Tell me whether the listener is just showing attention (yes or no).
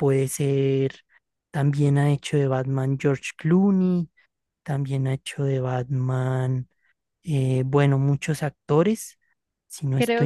no